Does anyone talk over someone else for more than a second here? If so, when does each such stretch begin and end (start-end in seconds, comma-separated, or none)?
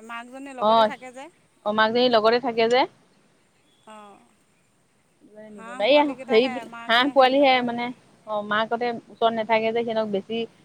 5.6-7.8